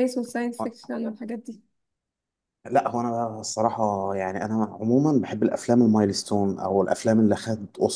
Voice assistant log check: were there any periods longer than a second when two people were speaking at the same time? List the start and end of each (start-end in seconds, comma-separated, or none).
none